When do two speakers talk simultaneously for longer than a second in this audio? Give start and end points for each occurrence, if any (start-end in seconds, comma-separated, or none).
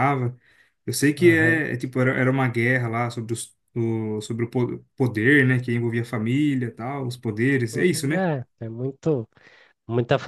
none